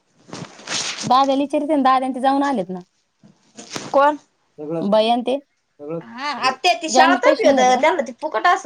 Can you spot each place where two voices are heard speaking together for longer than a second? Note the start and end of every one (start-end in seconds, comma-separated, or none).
6.0-7.8